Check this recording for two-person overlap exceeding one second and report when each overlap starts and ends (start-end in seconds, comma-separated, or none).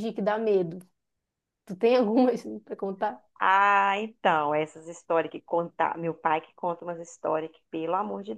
none